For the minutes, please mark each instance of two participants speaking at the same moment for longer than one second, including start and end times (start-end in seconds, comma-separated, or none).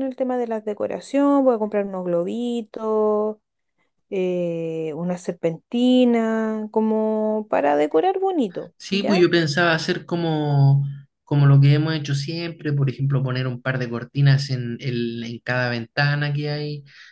none